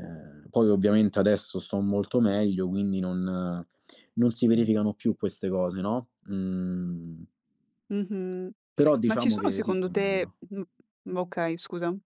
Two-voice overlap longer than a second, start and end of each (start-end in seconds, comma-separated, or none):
9.1-10.4